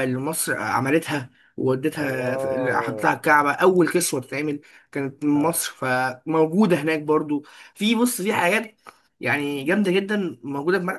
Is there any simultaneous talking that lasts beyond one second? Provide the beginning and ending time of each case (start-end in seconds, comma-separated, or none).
2.0-3.2